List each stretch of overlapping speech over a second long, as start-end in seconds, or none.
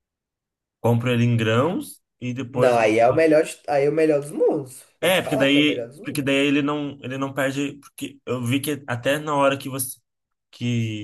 5.0-6.3